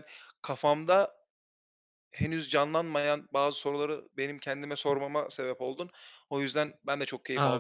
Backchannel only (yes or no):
no